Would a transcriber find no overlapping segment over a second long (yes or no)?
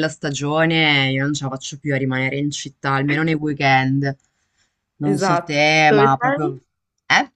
no